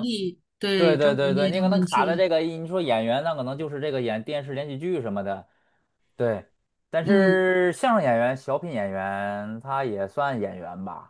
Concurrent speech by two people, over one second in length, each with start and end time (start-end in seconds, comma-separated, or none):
0.8-2.2